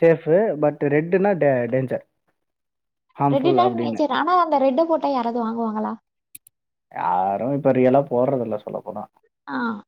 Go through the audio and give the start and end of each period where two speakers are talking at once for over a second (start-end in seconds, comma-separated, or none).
none